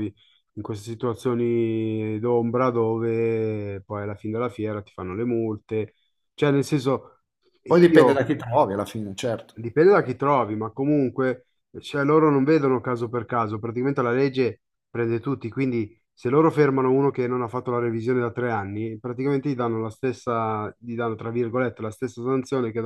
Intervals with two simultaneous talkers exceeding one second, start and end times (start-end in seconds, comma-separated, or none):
none